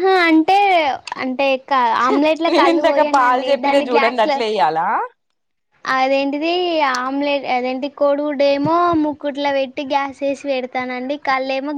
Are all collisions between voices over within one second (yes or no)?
no